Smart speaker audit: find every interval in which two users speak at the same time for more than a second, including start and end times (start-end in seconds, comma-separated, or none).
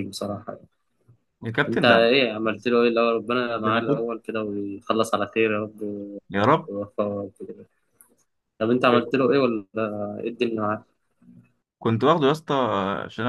none